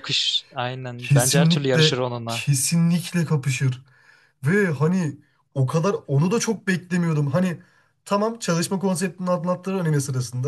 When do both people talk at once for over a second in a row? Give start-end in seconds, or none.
1.0-2.5